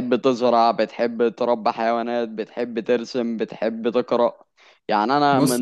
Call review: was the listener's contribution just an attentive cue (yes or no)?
yes